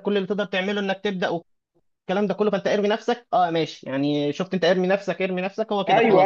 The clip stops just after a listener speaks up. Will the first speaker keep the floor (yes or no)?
no